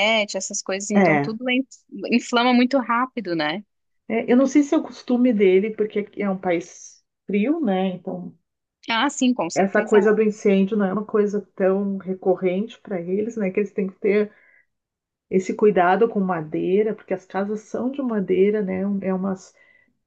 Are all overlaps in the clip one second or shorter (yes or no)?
yes